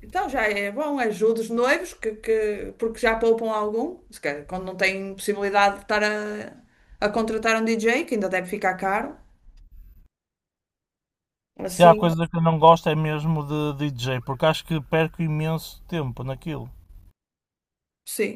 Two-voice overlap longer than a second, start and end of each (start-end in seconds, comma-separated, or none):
none